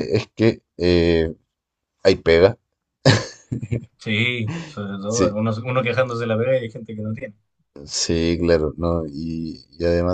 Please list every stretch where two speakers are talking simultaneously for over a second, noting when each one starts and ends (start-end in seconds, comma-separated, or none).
none